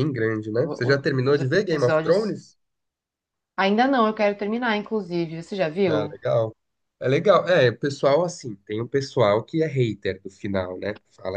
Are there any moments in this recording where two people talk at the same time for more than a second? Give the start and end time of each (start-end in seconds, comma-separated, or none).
0.6-2.4